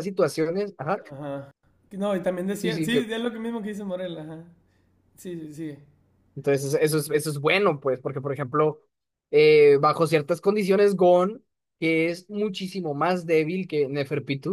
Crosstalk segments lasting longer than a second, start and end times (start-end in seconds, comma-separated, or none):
none